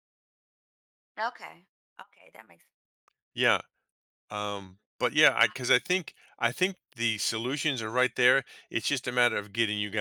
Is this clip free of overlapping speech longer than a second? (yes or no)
yes